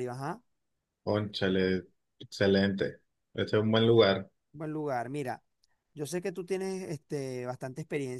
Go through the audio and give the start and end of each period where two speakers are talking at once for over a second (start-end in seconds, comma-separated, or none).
none